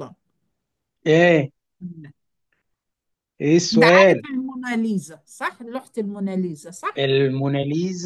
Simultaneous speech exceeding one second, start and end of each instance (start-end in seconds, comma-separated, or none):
none